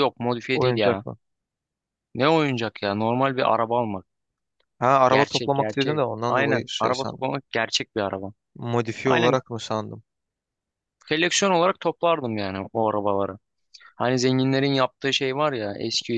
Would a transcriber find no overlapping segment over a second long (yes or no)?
no